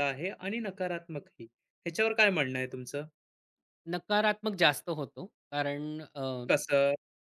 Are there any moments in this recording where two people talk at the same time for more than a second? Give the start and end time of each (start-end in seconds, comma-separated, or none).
none